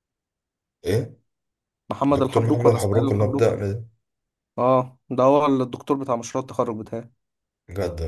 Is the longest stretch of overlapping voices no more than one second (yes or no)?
no